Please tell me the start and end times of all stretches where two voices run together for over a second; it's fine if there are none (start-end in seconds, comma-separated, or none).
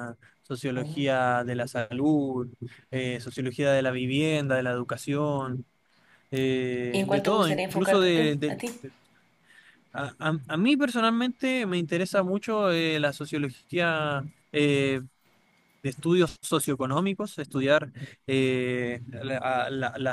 6.9-8.6